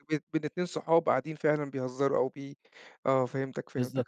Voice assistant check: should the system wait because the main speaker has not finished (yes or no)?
no